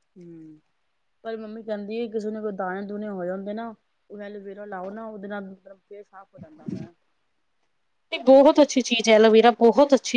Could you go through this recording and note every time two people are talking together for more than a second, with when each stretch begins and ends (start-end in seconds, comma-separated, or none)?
none